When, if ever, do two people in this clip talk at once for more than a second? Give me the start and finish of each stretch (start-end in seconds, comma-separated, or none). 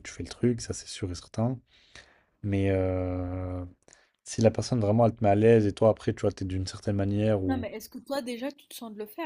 none